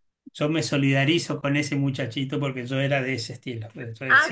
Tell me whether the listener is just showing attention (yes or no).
no